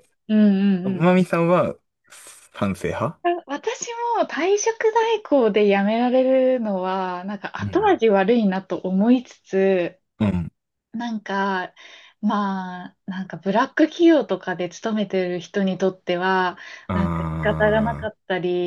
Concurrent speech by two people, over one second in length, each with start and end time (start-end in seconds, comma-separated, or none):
16.9-18.1